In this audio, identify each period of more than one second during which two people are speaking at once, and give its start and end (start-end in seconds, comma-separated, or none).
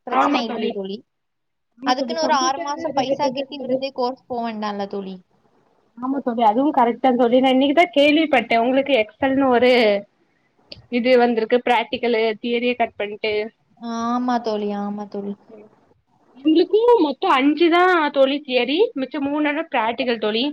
1.9-3.8